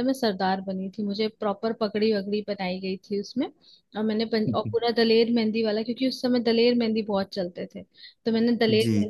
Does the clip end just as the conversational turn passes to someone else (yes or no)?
no